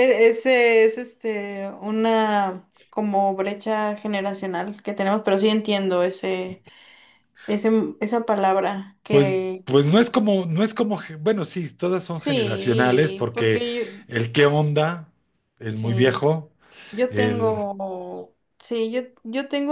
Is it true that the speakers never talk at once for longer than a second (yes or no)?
no